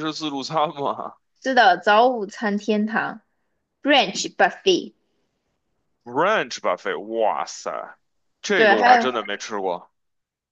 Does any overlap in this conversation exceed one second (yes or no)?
no